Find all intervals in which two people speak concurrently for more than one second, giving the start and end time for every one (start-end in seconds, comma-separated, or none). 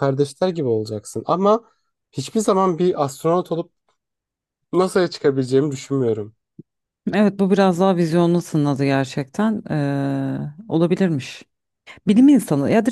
none